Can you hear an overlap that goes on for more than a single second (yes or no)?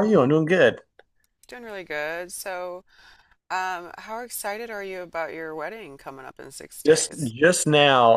no